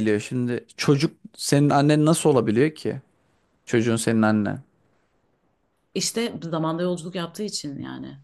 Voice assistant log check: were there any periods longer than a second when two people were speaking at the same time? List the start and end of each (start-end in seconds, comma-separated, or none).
none